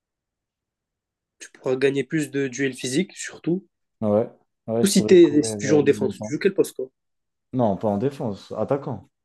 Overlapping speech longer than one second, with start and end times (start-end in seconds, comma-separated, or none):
4.8-6.3